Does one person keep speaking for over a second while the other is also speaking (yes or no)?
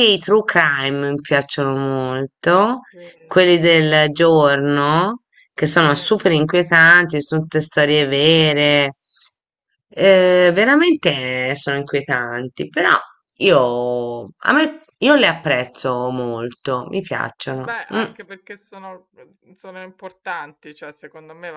no